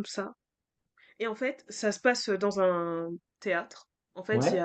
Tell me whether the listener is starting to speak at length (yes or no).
no